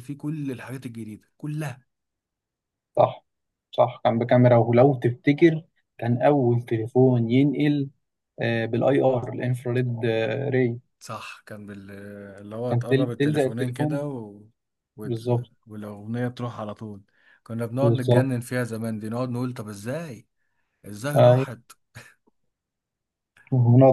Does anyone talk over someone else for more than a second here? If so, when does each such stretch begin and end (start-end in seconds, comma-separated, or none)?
12.7-14.0